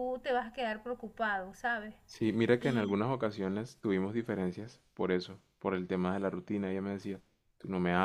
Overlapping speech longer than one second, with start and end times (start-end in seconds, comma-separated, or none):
none